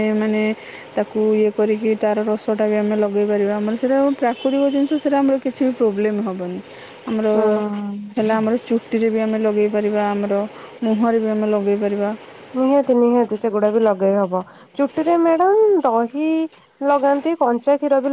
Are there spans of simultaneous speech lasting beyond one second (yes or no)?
no